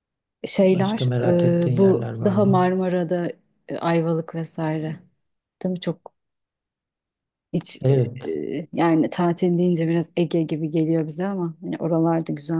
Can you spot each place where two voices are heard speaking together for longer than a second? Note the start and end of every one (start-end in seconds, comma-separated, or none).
0.6-2.7